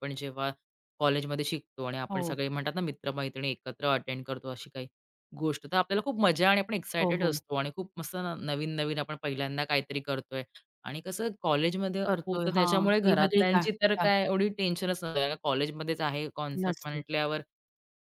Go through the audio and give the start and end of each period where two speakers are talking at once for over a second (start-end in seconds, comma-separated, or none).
12.1-14.1